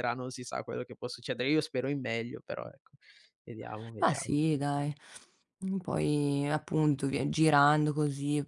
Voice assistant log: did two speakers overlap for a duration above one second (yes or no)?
no